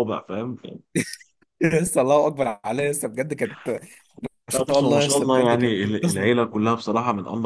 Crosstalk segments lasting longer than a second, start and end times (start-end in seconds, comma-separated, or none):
4.5-6.2